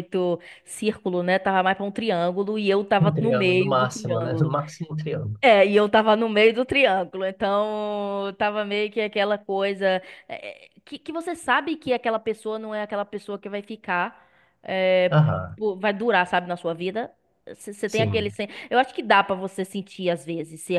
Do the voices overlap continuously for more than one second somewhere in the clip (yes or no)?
yes